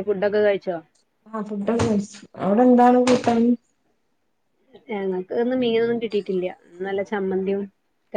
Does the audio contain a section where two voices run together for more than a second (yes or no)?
no